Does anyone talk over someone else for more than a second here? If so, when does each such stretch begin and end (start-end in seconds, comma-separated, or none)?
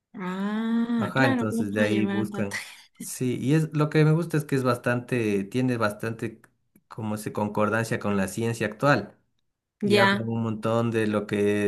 1.0-2.5